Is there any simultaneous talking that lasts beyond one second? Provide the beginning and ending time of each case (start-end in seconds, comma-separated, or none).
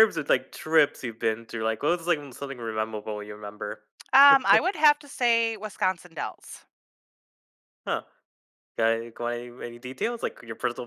none